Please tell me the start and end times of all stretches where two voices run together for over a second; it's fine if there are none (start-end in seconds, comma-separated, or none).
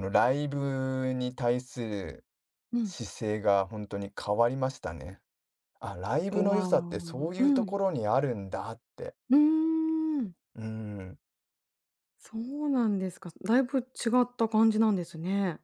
6.3-7.8